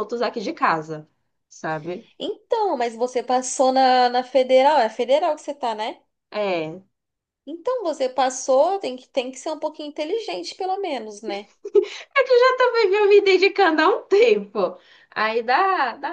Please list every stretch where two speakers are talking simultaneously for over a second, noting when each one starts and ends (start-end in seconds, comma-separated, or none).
none